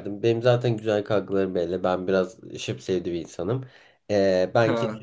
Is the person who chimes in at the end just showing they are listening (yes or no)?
yes